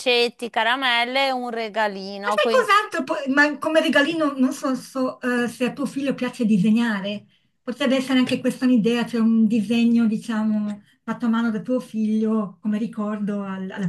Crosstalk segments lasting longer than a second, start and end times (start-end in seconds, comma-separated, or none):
none